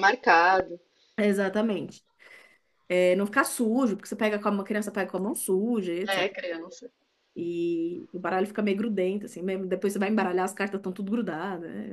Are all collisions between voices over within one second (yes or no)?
yes